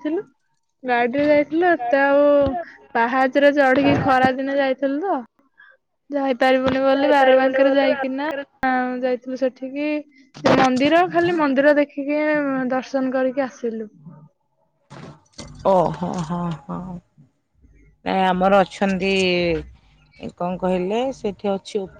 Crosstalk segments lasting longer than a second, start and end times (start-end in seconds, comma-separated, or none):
7.0-8.3